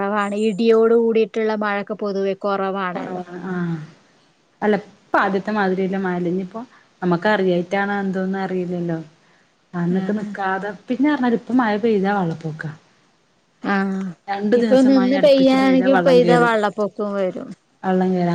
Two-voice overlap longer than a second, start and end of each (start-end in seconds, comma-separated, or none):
14.6-16.5